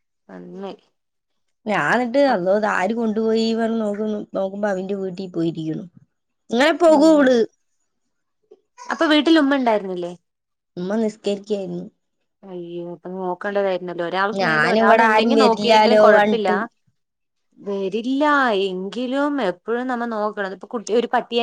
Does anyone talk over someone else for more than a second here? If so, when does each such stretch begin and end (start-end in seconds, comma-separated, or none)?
14.4-16.5